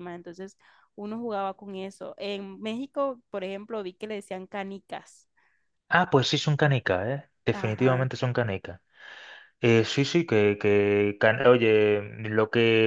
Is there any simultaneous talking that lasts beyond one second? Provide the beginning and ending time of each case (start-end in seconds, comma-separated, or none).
none